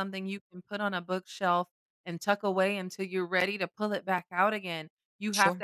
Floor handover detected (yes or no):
no